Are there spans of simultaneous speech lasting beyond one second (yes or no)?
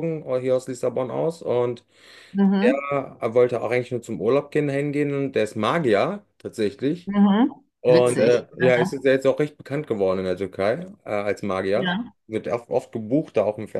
no